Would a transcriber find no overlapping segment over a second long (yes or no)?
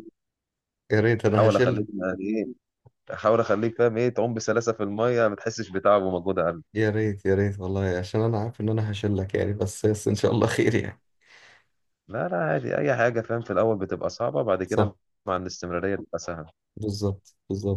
yes